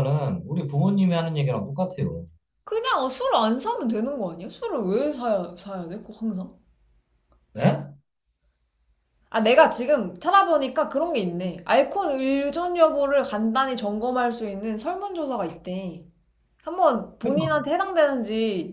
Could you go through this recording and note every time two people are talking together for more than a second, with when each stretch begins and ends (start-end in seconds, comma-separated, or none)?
none